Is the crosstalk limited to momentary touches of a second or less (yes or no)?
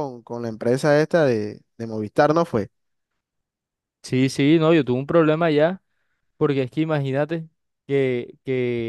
yes